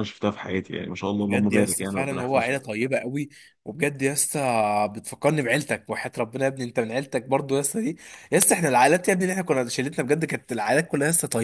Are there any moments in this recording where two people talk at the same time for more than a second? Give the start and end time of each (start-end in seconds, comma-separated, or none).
1.2-2.6